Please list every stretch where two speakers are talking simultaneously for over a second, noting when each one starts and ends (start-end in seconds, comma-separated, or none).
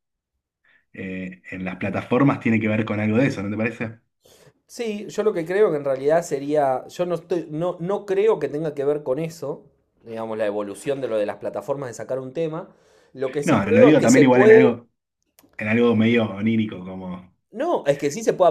13.4-14.8